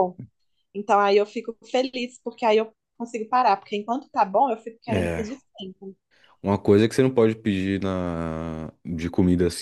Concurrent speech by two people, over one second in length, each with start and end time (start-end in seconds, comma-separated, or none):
none